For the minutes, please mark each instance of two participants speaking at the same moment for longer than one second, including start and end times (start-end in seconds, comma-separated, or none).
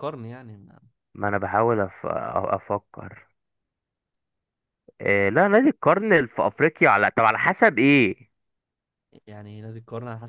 none